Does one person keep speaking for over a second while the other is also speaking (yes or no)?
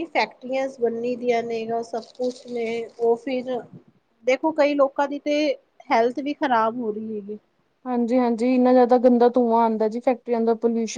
no